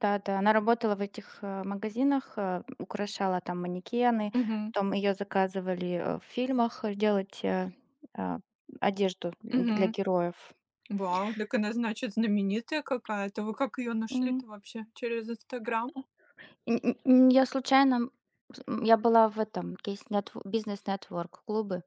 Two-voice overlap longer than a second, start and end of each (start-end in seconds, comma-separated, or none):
none